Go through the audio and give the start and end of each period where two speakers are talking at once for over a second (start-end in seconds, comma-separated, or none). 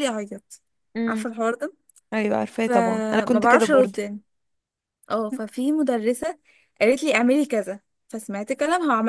2.5-4.0